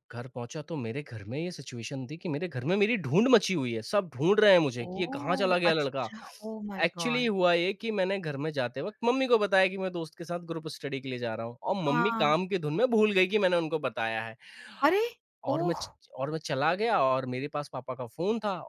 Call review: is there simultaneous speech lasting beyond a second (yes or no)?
yes